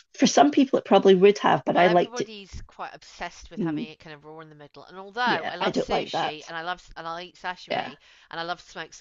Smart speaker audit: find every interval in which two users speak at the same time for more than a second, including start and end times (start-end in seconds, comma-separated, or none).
5.2-6.5